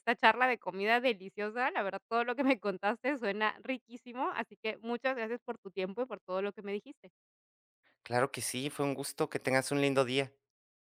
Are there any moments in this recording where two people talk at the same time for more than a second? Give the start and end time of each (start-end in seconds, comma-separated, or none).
none